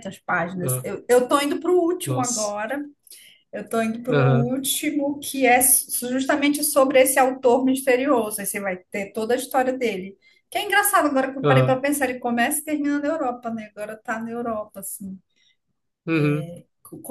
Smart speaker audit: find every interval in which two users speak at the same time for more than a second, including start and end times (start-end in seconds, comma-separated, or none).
none